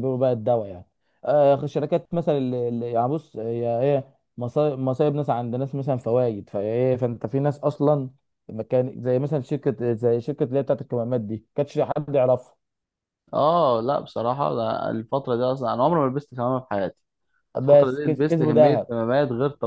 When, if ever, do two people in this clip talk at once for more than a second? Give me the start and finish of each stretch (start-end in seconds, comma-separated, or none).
17.6-18.9